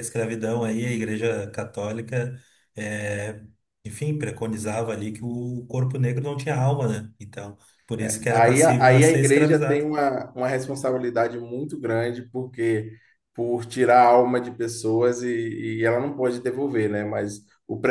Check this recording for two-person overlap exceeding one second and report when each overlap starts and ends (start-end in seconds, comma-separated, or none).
8.0-9.9